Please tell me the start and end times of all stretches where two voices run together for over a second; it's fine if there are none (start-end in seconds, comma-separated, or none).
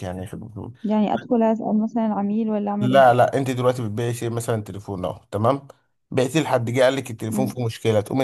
none